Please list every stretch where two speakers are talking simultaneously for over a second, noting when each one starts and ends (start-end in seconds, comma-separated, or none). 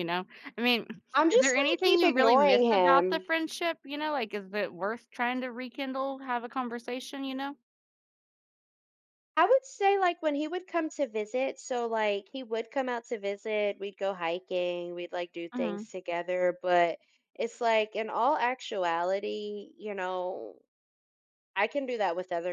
1.3-3.2